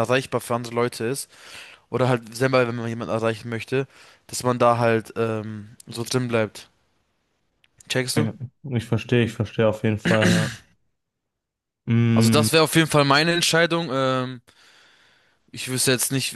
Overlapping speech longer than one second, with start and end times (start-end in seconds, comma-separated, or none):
none